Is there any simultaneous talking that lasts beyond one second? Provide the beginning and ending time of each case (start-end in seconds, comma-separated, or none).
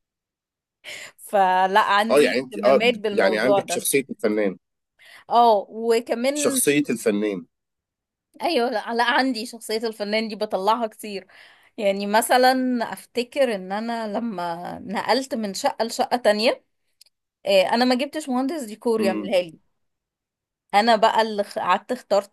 2.1-3.9